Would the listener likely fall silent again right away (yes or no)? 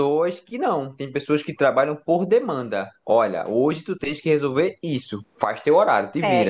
no